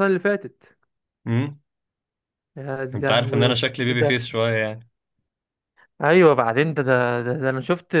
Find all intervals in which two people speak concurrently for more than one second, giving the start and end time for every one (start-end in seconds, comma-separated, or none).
3.0-4.2